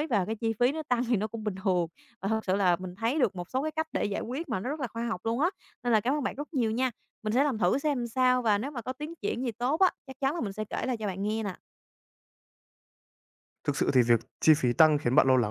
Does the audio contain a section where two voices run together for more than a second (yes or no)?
no